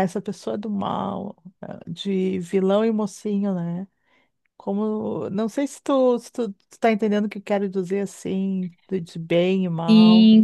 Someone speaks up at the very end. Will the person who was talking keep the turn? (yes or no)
no